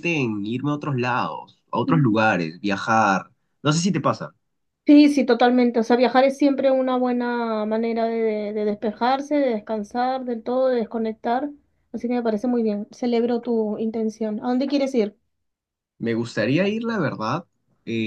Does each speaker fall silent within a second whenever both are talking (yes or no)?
yes